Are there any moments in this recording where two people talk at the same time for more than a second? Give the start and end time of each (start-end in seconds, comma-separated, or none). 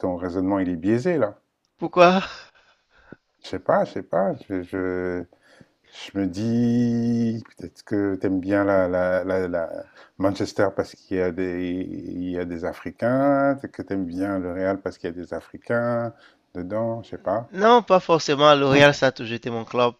none